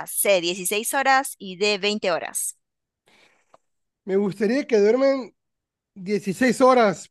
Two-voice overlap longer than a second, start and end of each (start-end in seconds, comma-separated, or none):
none